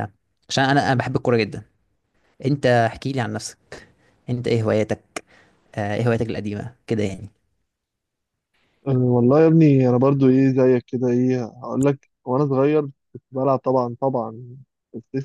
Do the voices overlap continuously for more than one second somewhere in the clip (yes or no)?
no